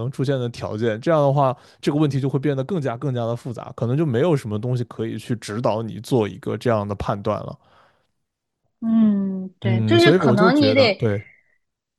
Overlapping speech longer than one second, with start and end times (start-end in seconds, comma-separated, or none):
9.6-11.0